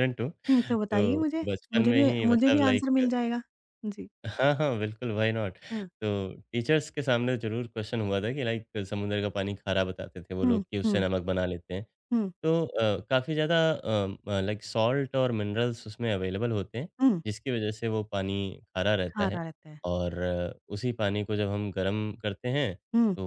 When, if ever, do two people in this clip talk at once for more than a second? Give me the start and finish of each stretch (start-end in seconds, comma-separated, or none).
0.9-3.0